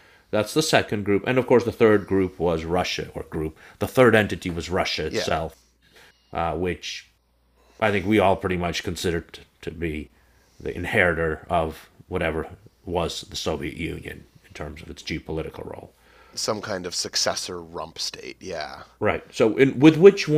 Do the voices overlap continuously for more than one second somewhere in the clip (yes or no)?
no